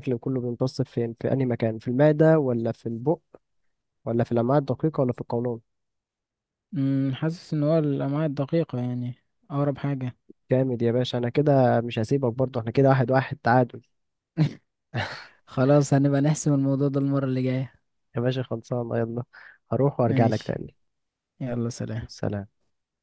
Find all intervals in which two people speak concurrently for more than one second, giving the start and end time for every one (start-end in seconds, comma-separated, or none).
none